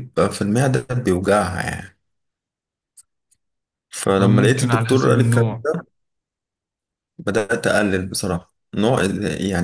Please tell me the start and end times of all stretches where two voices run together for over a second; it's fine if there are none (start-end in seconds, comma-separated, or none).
4.1-5.5